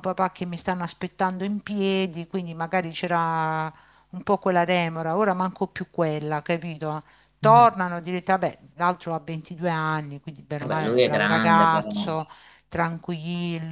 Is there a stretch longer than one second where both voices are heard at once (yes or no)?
yes